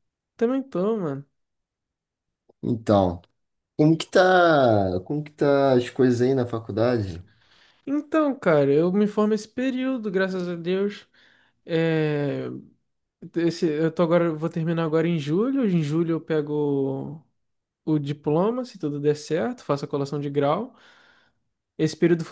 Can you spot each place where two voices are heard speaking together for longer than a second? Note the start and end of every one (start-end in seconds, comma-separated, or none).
none